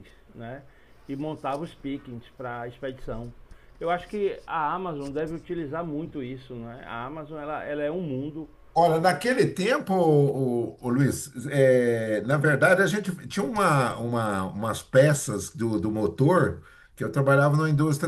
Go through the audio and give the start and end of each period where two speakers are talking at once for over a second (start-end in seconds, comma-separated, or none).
none